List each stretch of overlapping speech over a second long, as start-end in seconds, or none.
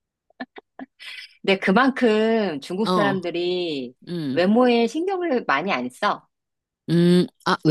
none